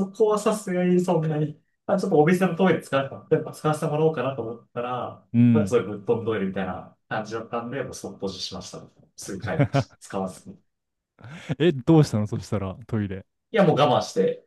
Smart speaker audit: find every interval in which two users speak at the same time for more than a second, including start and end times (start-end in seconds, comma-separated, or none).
none